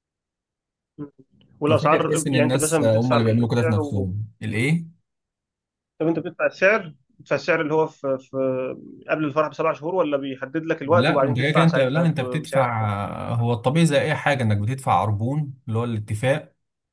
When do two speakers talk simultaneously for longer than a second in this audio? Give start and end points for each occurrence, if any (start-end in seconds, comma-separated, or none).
1.7-4.1, 10.8-12.7